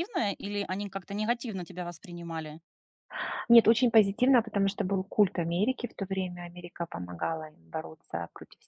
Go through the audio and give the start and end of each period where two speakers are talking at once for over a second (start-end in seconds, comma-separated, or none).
none